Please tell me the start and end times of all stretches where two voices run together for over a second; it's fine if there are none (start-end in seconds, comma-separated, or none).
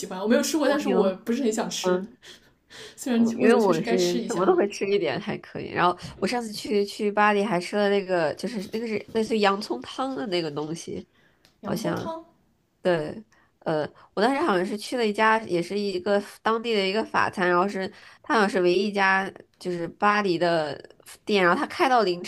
3.2-4.5